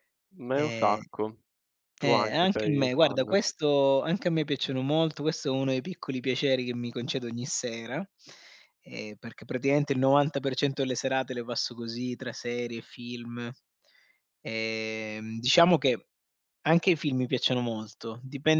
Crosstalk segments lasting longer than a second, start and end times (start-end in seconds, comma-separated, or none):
2.0-3.4